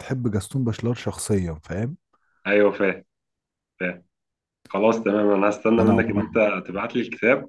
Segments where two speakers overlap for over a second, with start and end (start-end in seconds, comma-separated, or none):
none